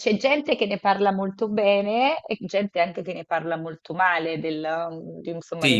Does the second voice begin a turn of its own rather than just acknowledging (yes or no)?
yes